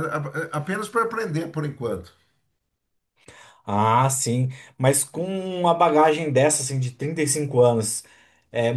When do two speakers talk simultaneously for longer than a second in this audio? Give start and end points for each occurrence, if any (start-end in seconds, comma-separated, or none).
none